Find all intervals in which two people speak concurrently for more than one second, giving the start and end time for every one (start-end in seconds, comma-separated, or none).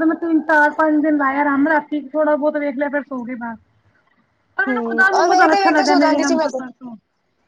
4.7-6.6